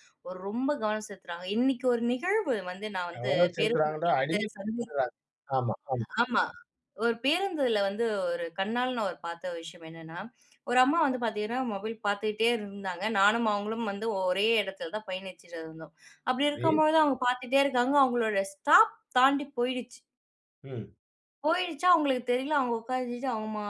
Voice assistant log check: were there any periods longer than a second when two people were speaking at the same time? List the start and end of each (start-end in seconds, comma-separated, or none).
3.1-4.8